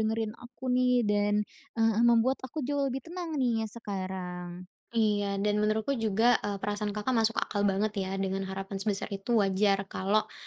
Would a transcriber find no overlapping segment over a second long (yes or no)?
yes